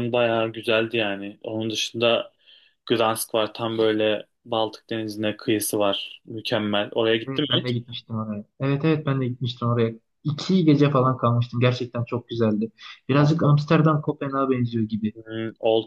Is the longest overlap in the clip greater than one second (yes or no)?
no